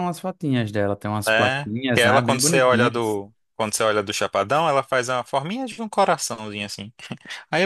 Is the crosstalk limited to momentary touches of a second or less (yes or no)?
no